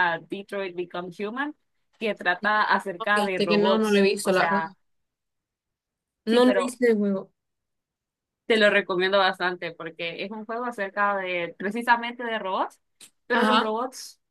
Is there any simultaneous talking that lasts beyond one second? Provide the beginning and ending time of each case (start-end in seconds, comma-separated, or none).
3.0-4.6